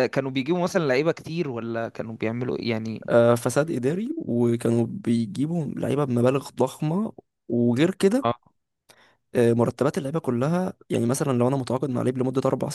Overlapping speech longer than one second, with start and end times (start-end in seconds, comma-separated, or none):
none